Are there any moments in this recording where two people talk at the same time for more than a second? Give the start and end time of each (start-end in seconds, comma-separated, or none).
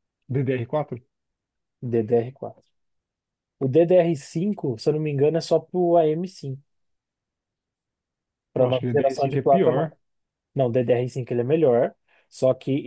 8.6-9.9